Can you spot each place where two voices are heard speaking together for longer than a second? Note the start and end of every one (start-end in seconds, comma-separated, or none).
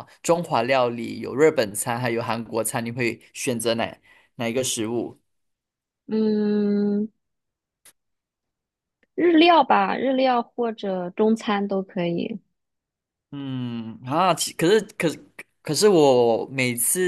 none